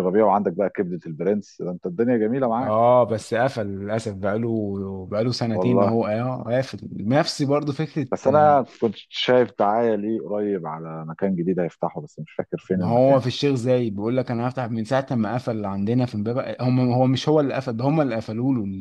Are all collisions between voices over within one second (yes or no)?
yes